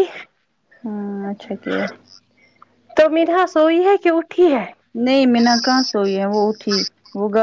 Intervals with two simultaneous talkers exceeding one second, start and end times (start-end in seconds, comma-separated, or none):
none